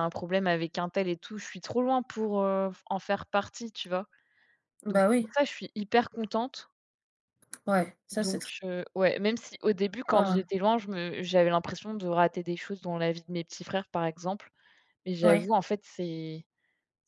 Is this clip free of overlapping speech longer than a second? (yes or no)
yes